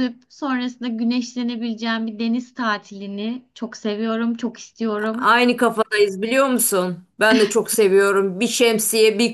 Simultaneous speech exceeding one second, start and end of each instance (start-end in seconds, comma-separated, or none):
none